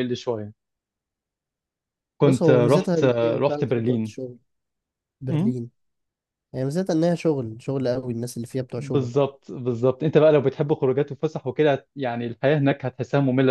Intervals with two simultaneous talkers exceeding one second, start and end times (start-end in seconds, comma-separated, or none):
2.2-4.1